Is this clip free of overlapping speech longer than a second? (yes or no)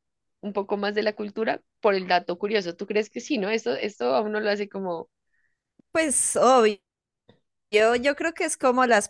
yes